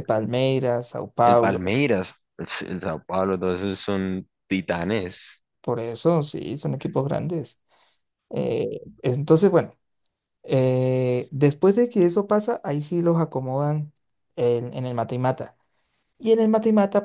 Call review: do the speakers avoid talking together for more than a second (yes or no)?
yes